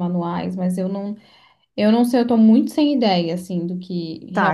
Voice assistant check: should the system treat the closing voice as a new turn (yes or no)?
yes